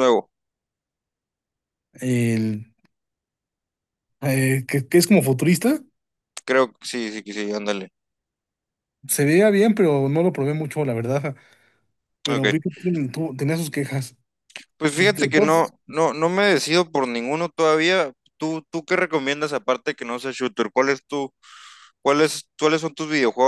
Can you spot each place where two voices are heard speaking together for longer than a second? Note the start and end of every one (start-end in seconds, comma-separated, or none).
none